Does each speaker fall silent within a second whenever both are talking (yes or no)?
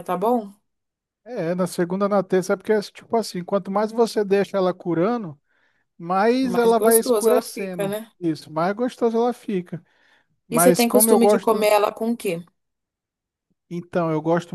no